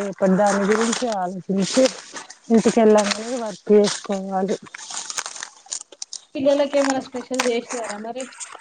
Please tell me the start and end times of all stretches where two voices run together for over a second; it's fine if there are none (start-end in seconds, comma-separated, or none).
none